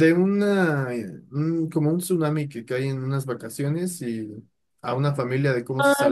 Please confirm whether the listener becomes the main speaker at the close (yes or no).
yes